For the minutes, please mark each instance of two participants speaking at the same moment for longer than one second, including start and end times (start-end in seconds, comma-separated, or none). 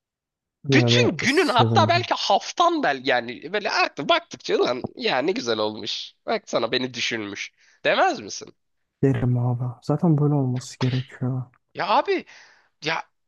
0.7-2.0